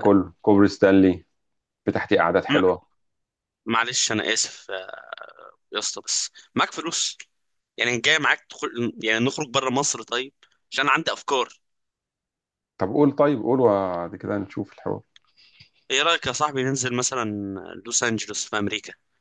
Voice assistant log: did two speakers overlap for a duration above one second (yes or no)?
no